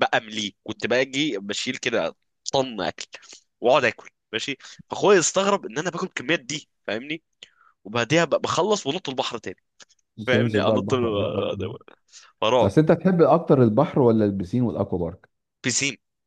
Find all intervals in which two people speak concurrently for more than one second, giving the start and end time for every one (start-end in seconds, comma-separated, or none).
10.3-11.6